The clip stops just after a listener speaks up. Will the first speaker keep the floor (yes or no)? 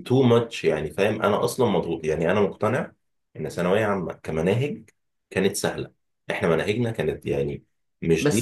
no